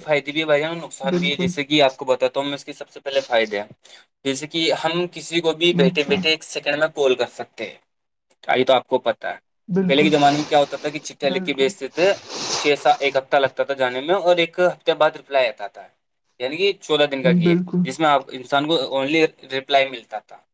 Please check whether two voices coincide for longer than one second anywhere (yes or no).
no